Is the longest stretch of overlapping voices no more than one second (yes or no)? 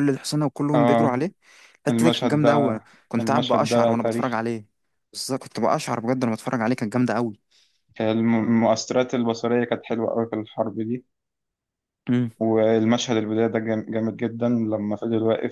no